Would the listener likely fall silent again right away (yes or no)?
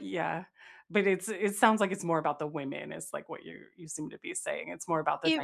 no